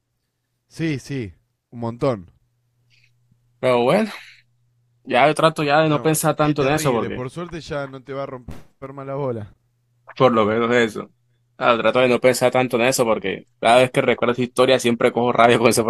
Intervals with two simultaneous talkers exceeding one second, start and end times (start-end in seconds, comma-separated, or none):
5.9-7.2